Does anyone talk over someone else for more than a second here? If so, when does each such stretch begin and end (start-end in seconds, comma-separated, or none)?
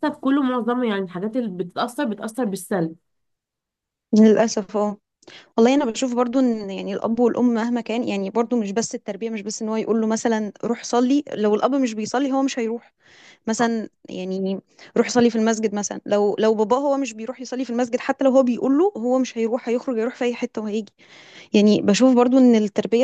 none